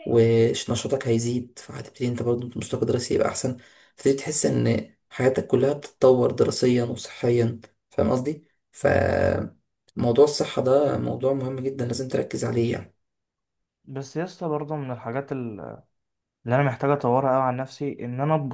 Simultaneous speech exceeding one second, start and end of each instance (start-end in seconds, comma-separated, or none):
none